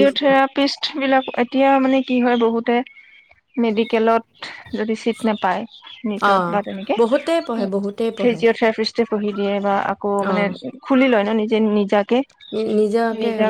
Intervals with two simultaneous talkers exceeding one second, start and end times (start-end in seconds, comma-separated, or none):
7.0-8.4